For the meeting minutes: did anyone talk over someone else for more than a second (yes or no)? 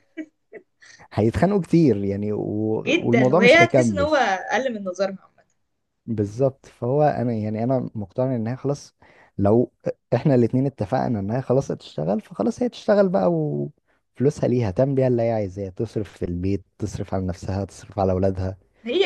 yes